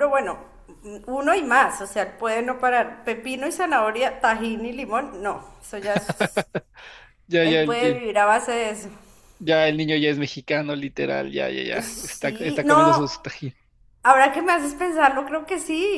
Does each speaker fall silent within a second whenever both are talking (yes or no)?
no